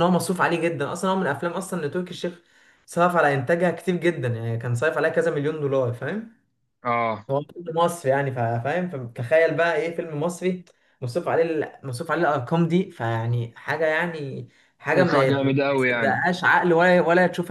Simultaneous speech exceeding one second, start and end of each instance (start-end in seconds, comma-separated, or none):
14.9-16.3